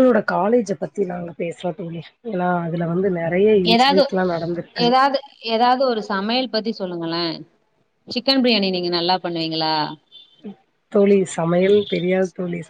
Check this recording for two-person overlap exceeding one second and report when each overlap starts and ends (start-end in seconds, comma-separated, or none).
none